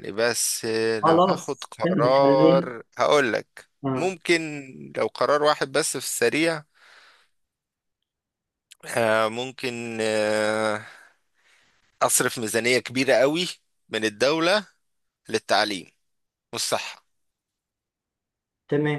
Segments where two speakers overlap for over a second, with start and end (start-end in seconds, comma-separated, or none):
1.0-2.7